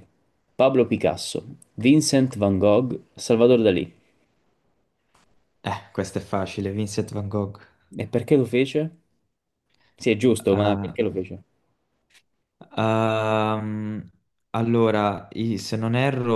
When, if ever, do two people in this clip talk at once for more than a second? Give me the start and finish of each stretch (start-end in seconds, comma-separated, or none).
none